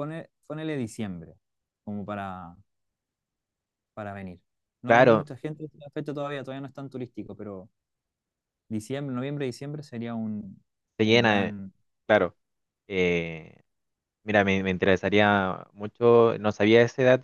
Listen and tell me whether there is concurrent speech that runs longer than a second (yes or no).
no